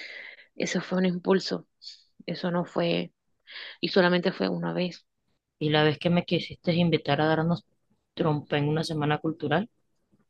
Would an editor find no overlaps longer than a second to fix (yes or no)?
yes